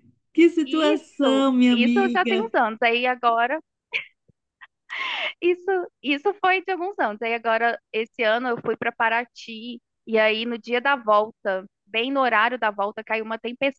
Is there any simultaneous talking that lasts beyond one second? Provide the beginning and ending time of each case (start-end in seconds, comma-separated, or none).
0.6-2.5